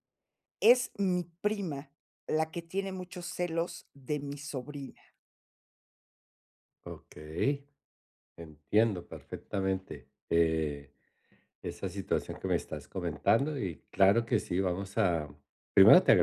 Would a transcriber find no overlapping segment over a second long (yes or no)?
yes